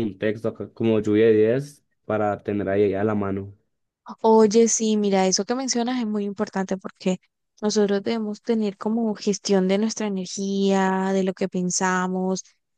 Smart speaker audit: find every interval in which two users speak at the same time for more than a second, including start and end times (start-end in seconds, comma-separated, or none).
none